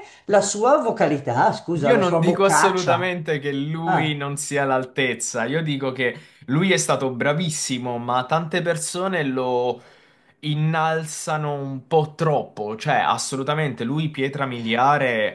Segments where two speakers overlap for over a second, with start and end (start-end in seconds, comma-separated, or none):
1.8-3.1